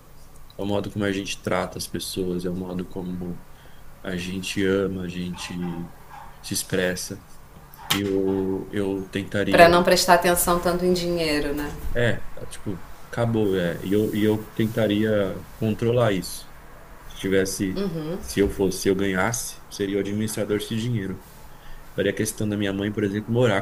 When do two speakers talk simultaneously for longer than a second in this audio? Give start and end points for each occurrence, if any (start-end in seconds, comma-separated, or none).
none